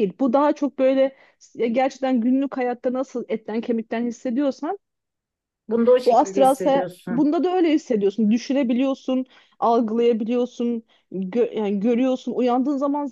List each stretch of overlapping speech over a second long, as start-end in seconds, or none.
6.0-7.3